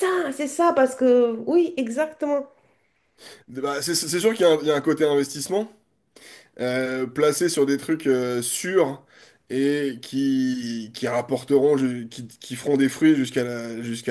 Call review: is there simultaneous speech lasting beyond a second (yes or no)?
no